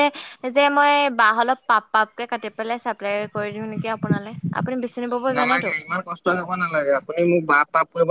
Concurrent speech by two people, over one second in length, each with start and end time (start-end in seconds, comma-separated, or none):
none